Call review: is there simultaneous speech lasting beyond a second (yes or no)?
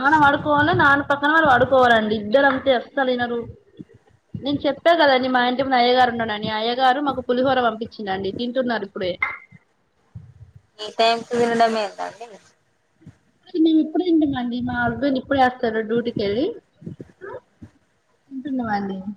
no